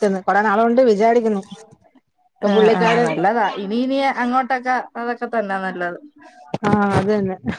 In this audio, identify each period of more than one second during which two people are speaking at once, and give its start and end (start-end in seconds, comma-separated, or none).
none